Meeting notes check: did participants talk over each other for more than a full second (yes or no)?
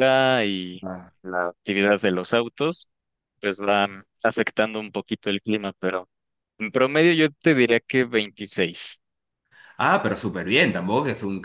no